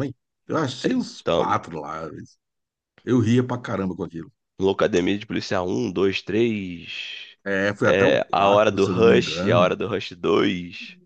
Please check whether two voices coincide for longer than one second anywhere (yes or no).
yes